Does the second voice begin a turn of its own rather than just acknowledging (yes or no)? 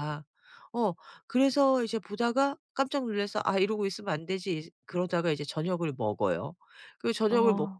no